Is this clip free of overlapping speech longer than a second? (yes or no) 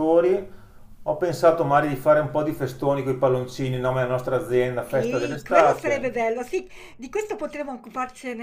no